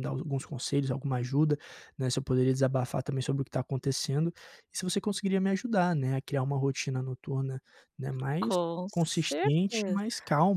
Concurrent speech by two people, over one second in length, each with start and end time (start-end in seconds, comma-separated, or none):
8.4-10.0